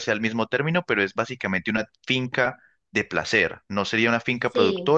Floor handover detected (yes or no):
no